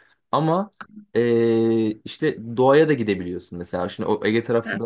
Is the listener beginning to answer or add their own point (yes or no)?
no